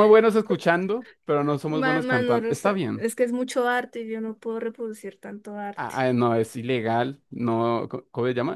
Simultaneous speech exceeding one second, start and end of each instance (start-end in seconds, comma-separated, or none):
1.7-3.1